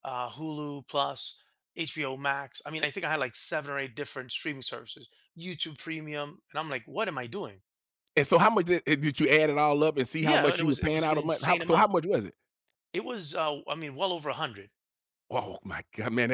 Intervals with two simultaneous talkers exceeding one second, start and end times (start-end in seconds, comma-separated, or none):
10.2-11.9